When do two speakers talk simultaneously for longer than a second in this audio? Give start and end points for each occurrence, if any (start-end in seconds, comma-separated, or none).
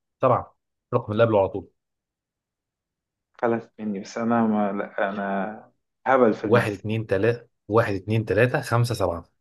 none